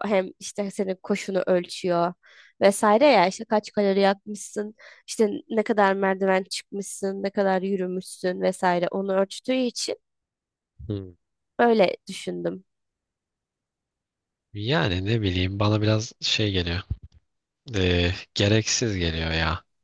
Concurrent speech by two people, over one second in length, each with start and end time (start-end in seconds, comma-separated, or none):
none